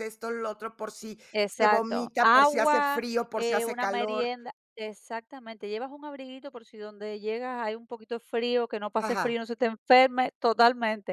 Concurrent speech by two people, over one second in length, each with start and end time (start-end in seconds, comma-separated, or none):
1.3-4.3